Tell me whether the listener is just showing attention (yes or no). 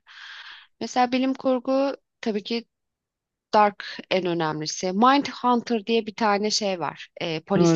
no